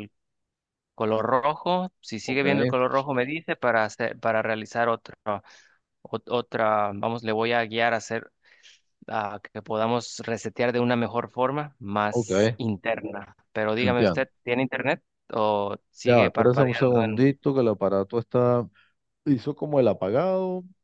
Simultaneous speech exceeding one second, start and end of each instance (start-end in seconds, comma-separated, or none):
16.1-17.3